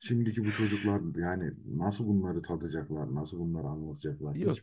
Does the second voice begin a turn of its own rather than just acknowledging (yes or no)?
yes